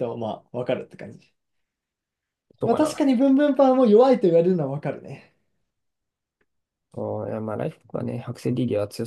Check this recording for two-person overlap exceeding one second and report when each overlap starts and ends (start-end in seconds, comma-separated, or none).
none